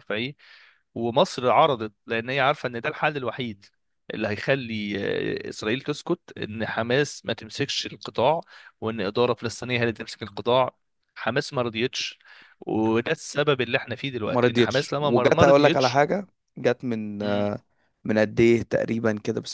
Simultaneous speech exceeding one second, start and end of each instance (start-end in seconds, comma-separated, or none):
14.3-16.0